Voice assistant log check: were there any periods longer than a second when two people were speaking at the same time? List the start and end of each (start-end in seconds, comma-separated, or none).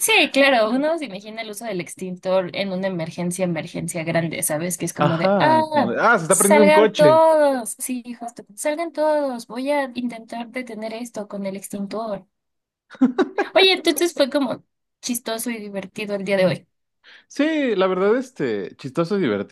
5.0-7.2